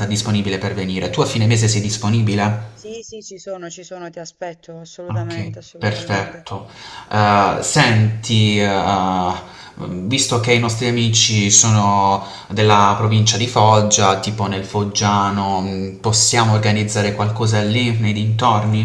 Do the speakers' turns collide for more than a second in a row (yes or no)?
yes